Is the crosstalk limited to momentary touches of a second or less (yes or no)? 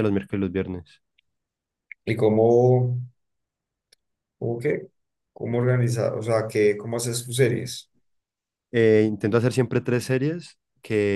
yes